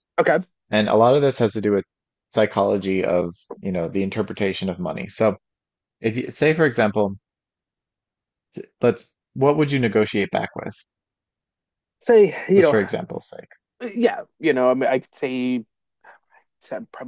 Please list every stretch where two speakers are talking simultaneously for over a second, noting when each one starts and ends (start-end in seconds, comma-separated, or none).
none